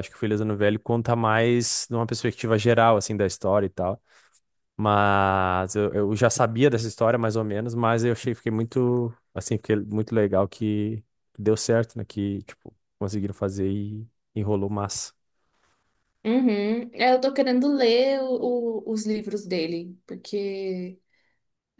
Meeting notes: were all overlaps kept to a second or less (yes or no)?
yes